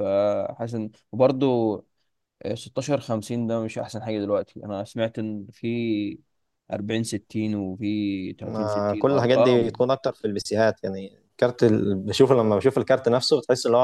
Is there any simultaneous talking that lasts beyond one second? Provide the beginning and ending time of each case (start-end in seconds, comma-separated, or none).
8.4-9.8